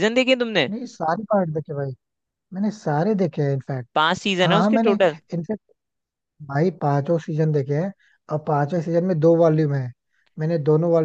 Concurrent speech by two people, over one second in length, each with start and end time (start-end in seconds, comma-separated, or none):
none